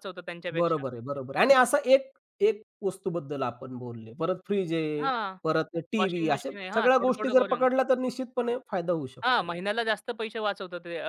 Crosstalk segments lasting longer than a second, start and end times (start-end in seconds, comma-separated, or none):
6.0-7.7